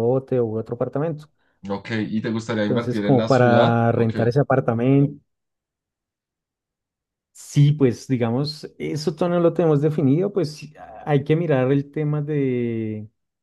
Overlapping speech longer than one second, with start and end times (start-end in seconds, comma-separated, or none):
2.7-4.2